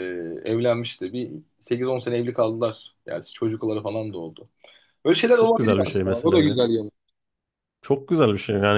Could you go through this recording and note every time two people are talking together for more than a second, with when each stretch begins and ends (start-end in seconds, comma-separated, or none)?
5.3-6.6